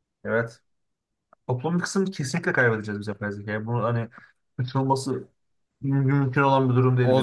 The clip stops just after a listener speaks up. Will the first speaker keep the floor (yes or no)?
no